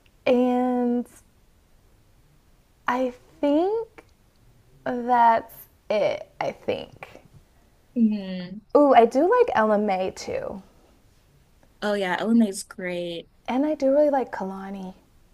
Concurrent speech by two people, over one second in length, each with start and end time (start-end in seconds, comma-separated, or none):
none